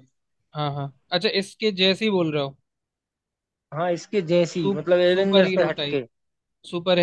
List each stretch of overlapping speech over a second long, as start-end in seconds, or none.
4.5-6.0